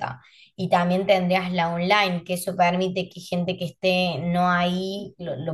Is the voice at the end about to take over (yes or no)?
no